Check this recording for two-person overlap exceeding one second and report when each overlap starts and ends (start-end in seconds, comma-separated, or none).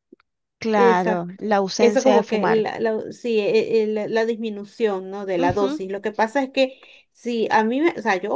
0.7-2.6